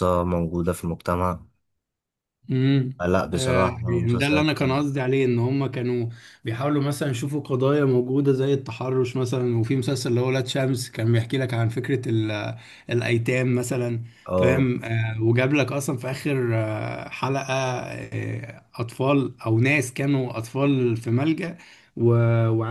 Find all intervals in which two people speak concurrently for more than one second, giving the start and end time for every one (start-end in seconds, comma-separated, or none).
3.0-4.8